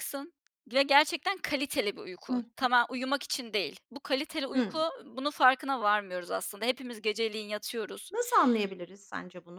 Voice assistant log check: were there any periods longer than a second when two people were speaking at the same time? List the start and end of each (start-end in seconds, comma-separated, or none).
none